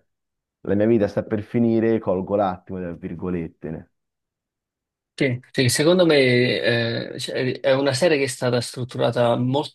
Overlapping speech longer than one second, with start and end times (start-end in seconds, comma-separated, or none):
none